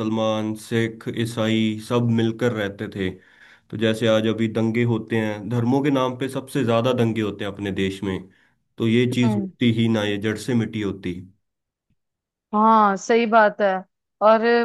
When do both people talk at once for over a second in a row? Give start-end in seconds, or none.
none